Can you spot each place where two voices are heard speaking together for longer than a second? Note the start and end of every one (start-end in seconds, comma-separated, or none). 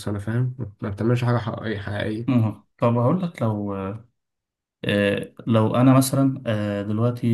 none